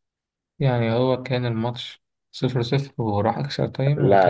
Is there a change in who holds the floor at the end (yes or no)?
yes